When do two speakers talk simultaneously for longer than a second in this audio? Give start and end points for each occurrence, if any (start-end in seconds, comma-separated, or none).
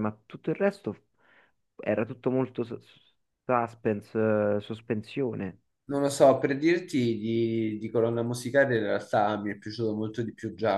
none